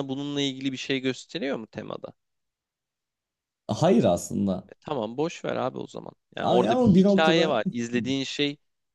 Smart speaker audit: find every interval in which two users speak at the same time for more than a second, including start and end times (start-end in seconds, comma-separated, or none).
6.4-7.6